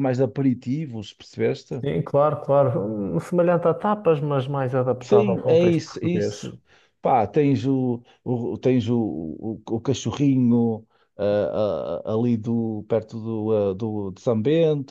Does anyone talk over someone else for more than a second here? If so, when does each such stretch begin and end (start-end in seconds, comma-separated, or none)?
5.0-6.5